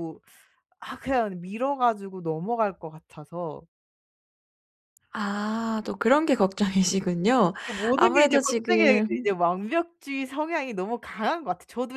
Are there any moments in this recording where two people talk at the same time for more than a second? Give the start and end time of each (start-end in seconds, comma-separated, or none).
8.0-9.3